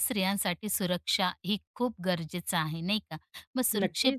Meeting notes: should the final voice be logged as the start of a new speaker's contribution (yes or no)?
no